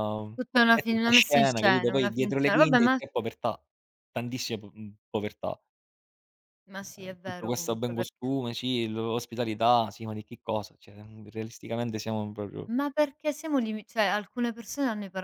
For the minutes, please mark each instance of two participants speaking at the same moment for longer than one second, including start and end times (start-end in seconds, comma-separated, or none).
0.7-3.0, 7.0-8.3